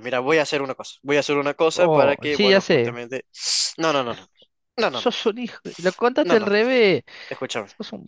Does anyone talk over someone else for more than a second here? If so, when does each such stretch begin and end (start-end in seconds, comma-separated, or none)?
1.7-3.0